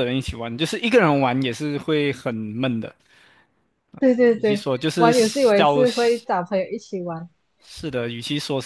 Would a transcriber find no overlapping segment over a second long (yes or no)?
no